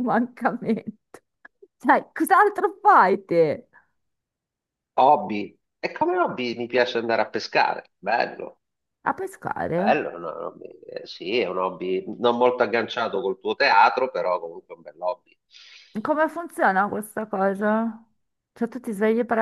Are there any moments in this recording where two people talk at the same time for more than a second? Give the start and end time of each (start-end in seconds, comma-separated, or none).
none